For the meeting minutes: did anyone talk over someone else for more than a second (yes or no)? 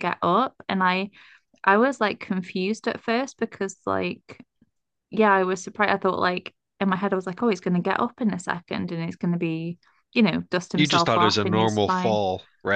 yes